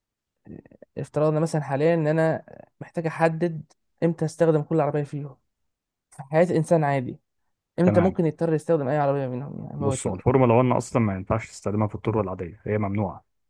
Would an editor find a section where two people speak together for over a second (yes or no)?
no